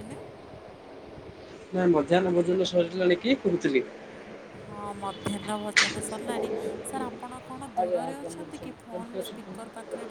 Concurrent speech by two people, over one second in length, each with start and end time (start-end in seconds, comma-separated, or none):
7.8-9.5